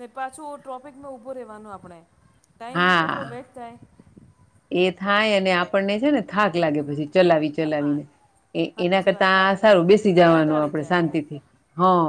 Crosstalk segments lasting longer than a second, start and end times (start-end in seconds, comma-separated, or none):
8.7-11.0